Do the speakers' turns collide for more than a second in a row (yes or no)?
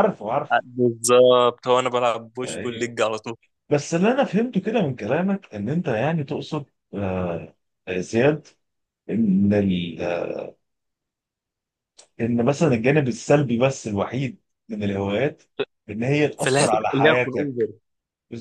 yes